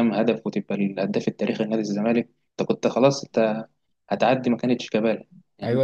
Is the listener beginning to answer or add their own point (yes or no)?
yes